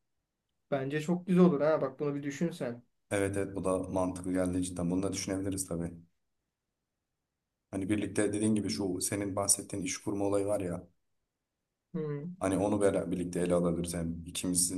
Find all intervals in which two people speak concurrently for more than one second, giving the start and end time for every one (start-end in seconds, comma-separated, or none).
none